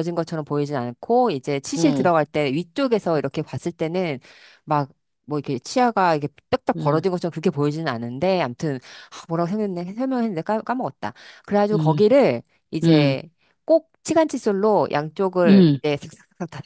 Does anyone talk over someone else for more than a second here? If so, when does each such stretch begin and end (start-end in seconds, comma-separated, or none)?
none